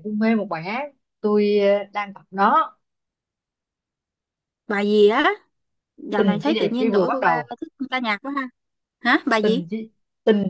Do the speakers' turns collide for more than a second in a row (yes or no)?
yes